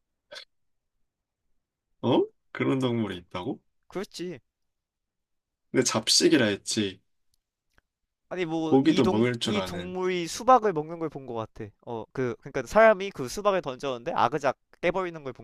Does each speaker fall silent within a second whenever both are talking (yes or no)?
no